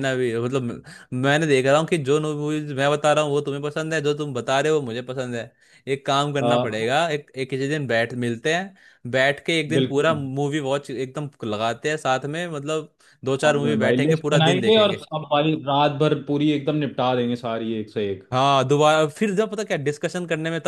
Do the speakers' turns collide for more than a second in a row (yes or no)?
yes